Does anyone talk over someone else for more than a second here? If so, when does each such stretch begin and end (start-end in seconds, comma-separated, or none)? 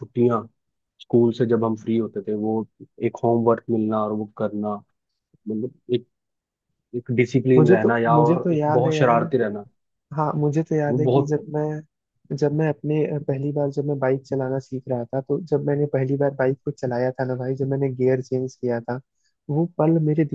7.5-9.2